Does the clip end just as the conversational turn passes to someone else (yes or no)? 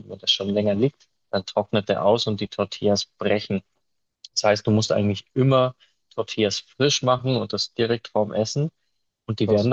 no